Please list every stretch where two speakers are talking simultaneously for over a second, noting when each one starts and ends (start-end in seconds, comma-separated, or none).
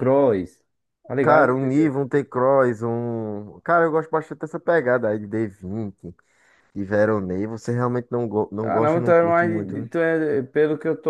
8.6-9.9